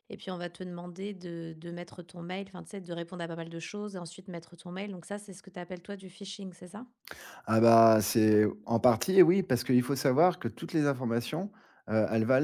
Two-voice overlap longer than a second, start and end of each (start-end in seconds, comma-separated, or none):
none